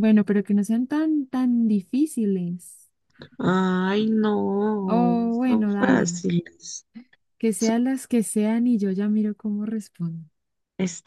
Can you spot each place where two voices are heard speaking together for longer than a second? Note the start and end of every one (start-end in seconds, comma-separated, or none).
4.8-6.2